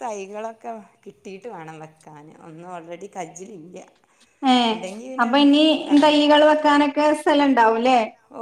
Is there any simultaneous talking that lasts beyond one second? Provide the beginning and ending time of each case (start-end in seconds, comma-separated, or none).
none